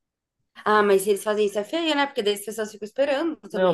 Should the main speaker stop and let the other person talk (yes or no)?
yes